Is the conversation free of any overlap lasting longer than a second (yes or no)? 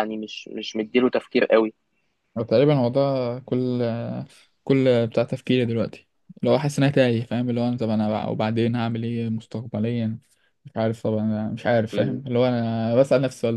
yes